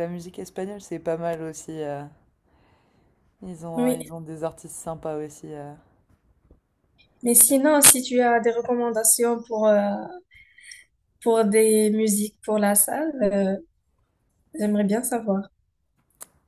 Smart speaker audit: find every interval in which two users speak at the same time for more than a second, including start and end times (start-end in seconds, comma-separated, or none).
none